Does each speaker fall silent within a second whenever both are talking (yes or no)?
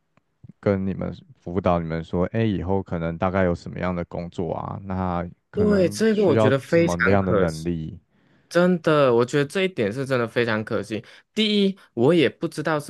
no